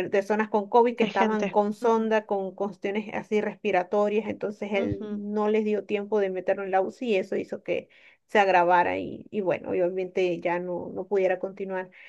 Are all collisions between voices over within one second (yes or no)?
no